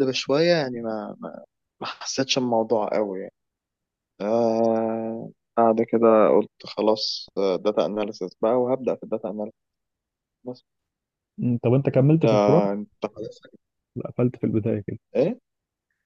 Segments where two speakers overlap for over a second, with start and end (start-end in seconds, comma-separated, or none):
none